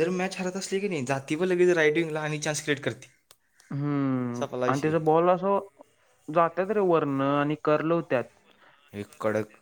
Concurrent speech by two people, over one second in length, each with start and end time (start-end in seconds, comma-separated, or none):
none